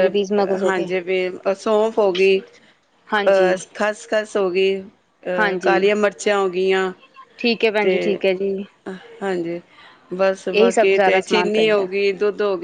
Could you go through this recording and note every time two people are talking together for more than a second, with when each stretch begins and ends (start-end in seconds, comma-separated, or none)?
10.5-11.8